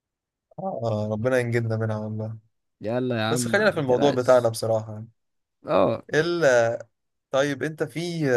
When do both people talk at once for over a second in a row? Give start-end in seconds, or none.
3.3-4.5